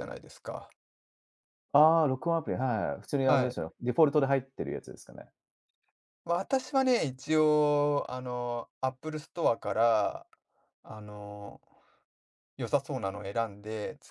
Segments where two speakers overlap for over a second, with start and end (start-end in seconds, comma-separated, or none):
none